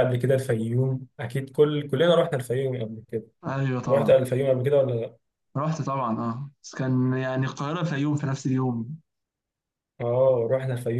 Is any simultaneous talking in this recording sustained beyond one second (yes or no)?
no